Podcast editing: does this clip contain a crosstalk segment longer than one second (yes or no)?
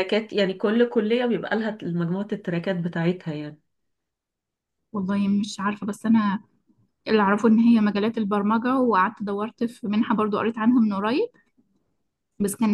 no